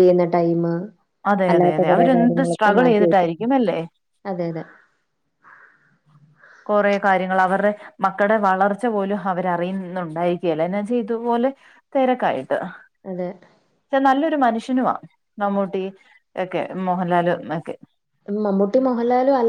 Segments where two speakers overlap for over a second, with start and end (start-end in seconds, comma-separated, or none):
1.5-3.4